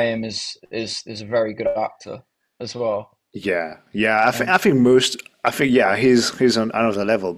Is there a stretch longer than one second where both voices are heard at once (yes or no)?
no